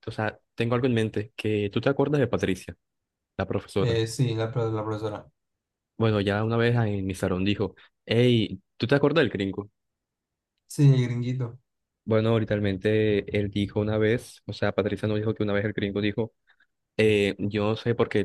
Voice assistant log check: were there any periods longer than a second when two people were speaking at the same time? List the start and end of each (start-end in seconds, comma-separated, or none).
none